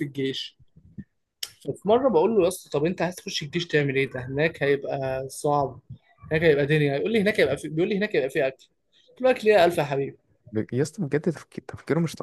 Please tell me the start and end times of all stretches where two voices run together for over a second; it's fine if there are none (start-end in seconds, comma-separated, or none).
none